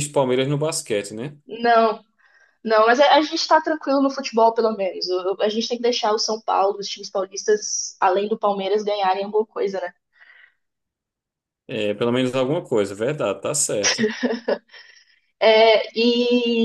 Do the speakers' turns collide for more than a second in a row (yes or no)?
no